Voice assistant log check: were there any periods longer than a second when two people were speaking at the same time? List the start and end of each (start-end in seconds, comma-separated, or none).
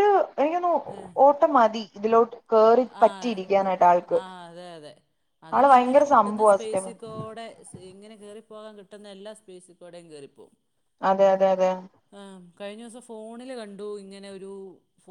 5.5-7.0